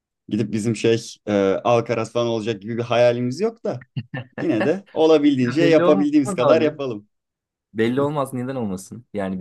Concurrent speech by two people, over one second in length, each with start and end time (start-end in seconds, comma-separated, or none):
5.4-6.8